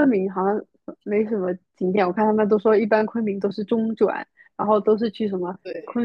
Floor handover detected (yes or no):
no